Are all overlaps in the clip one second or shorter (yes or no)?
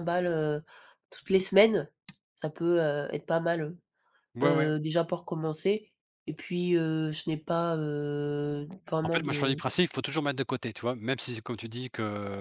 yes